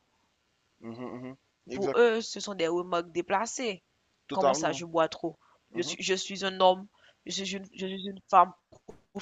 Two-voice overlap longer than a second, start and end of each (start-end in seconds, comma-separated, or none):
none